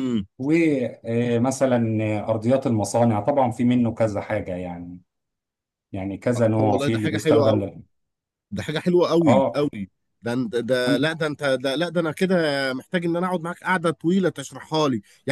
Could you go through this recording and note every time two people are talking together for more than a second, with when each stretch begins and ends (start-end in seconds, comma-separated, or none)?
6.3-7.7